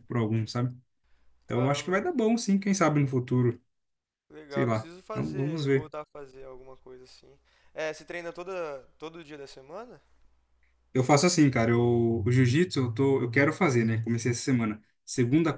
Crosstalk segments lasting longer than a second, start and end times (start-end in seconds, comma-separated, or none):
4.5-5.9